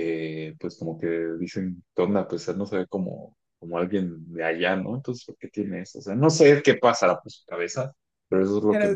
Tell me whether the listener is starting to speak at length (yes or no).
yes